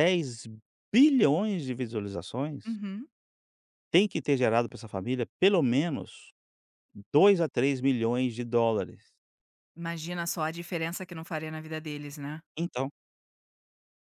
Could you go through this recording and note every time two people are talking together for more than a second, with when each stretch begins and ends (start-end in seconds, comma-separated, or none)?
none